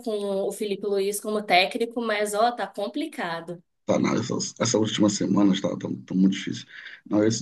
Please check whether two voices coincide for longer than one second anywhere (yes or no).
no